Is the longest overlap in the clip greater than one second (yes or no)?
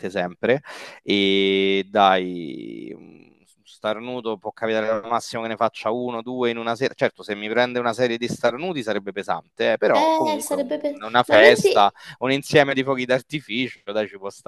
yes